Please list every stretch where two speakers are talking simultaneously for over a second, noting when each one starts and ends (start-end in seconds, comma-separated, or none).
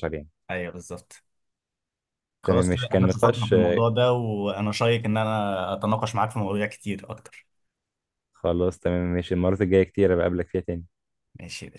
2.4-3.8